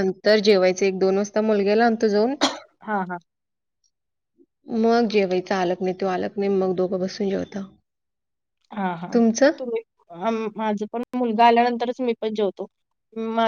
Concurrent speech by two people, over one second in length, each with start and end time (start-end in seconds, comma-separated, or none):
none